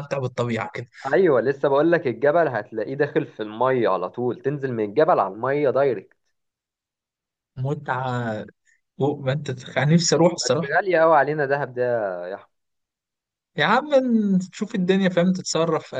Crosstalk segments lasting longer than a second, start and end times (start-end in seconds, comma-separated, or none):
none